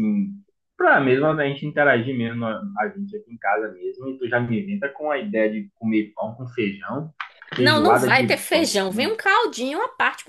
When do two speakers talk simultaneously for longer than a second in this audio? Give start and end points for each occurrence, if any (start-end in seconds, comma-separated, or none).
7.6-9.2